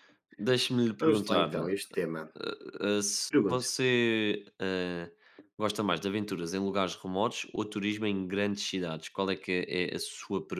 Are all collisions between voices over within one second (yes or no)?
yes